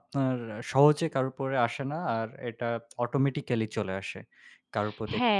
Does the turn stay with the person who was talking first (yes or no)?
no